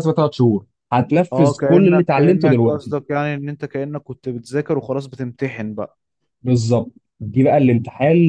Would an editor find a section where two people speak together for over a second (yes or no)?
yes